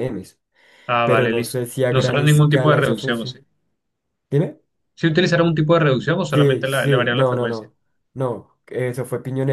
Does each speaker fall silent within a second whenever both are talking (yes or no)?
no